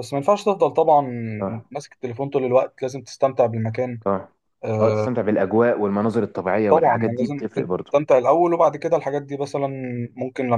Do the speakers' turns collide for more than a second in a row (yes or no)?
yes